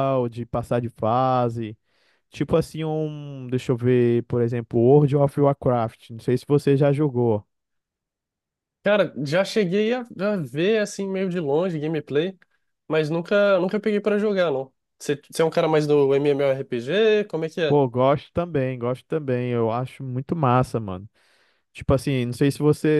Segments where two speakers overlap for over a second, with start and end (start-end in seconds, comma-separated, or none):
none